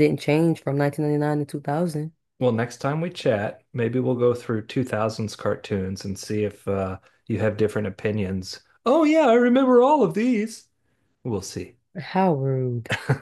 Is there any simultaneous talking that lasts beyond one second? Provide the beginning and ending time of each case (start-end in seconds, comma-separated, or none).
none